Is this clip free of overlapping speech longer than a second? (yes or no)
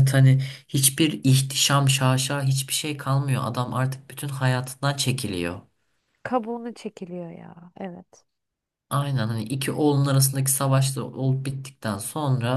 yes